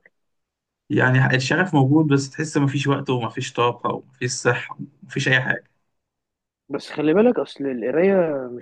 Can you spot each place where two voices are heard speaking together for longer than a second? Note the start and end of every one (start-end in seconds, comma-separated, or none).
none